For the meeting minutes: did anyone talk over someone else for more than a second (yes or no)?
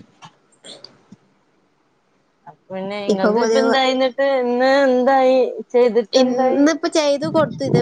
no